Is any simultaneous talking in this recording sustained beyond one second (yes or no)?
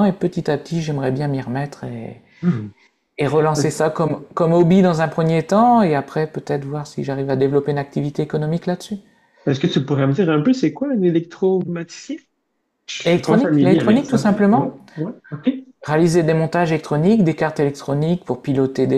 yes